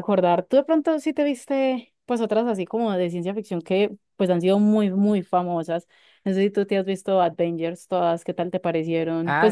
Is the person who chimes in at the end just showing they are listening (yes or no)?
no